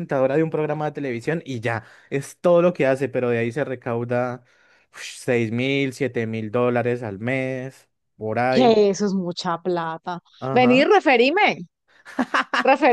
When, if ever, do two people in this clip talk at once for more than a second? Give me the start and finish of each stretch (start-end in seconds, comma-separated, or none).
none